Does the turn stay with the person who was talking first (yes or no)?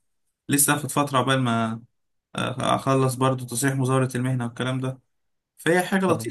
no